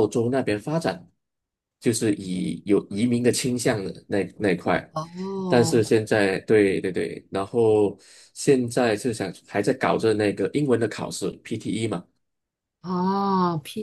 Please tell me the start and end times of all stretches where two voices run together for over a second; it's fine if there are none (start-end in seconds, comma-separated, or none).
none